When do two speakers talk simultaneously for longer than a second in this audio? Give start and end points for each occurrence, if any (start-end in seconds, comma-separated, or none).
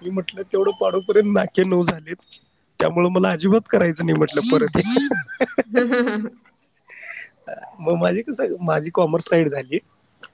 4.3-5.8